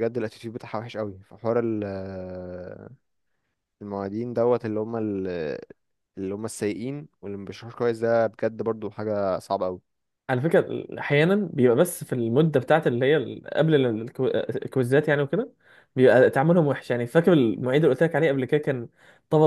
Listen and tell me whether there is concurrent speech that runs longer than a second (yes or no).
no